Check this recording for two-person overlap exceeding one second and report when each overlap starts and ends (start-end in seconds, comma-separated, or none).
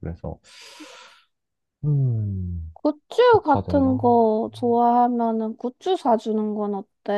2.7-4.3